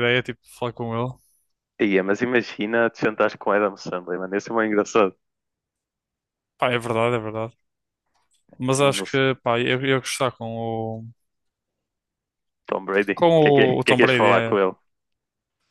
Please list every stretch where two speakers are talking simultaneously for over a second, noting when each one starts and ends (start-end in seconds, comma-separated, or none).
13.1-14.5